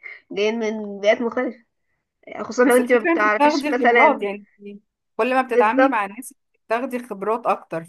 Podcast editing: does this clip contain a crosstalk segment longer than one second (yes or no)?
yes